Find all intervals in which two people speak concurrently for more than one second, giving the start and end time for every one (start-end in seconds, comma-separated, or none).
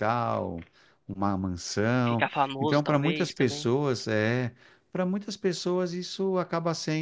2.1-3.7